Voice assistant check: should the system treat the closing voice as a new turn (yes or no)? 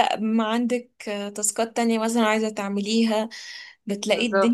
no